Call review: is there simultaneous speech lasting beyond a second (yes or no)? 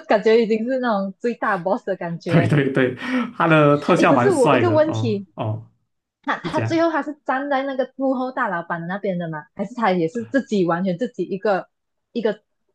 yes